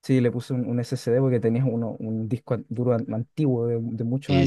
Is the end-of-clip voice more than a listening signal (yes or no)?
yes